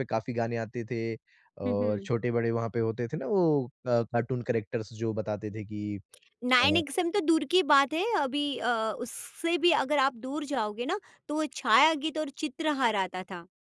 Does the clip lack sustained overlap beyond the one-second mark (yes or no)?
yes